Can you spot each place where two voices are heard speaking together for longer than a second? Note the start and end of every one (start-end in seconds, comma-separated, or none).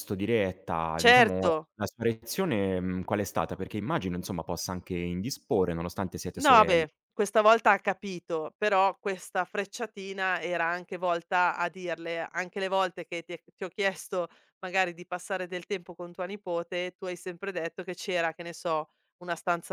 none